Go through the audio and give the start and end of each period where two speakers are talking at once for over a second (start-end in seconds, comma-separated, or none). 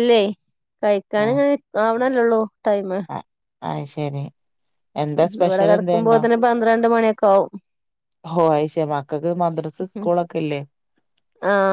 none